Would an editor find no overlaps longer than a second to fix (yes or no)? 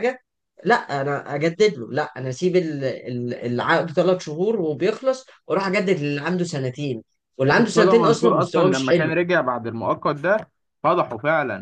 no